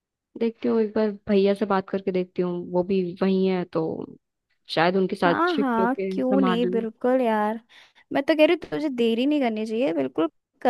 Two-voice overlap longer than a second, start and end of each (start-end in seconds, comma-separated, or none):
5.2-6.8